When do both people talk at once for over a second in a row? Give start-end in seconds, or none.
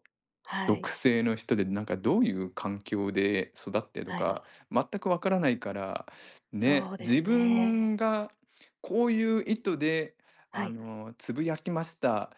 6.6-7.8